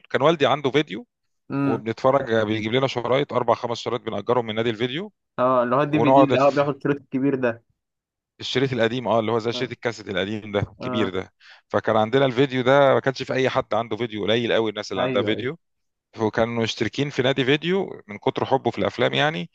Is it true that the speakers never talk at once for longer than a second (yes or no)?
yes